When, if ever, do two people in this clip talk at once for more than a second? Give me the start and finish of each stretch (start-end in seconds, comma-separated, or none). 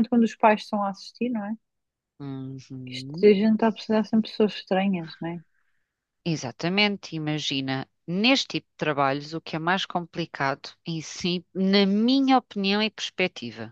none